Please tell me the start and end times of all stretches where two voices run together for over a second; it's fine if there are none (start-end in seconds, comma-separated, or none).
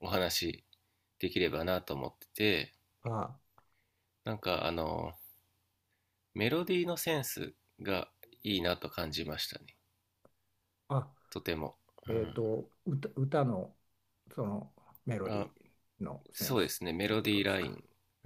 16.3-17.7